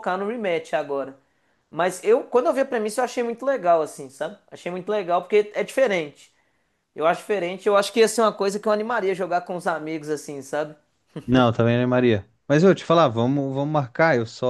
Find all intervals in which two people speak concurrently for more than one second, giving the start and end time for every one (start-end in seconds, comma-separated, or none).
none